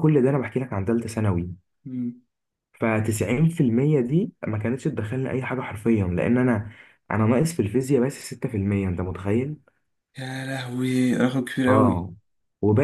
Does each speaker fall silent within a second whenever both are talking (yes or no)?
yes